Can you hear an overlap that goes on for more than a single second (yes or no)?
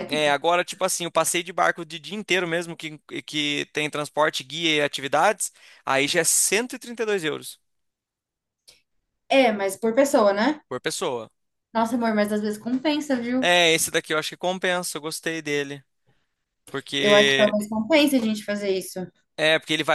no